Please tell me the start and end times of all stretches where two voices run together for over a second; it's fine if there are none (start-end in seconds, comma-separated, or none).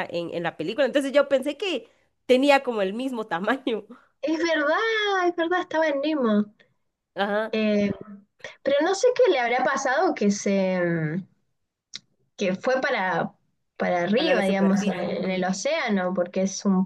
14.2-15.4